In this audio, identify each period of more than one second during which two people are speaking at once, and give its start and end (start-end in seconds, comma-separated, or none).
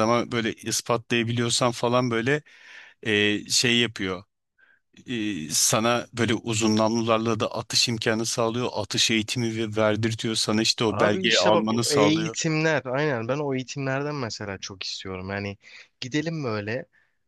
10.9-12.3